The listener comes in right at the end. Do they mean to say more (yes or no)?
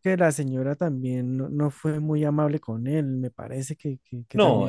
yes